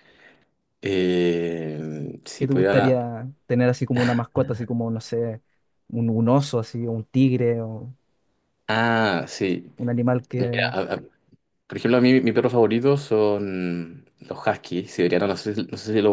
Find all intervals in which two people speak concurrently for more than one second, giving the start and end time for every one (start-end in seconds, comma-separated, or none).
none